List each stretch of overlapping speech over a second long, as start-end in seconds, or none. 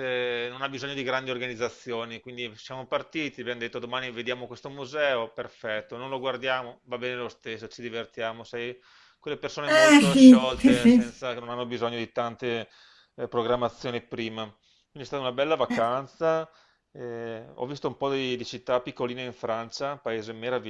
9.6-11.1